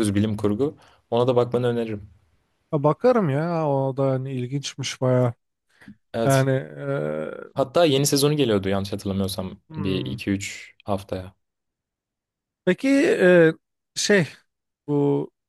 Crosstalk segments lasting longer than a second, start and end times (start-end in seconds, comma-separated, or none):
none